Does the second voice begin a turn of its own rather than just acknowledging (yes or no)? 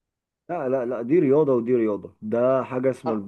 no